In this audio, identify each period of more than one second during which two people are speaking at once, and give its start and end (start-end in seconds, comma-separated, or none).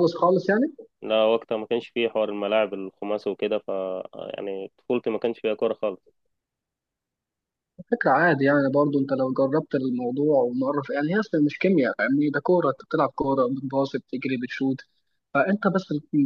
none